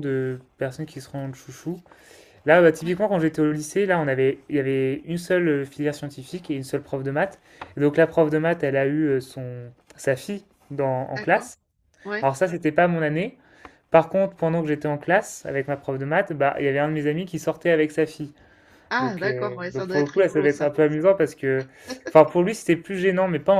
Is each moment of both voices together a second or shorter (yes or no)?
no